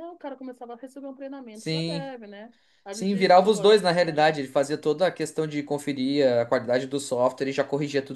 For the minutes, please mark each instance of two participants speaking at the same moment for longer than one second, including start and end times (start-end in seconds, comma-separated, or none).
2.9-4.4